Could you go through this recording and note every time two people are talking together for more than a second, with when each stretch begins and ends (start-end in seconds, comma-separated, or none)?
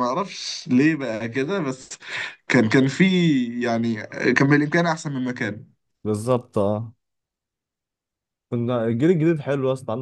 none